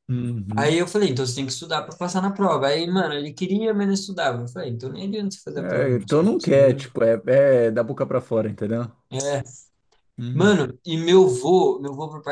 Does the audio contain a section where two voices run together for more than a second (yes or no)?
yes